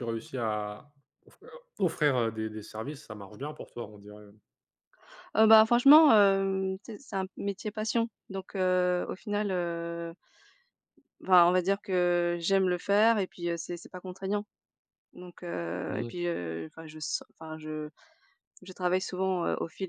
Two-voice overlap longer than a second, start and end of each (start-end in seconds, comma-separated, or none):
none